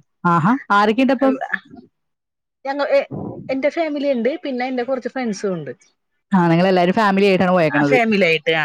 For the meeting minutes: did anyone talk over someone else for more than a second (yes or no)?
no